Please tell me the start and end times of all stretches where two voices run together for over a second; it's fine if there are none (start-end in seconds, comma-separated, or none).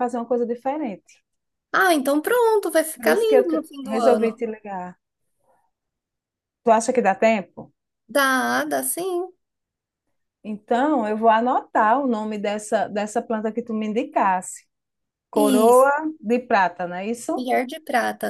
3.0-4.4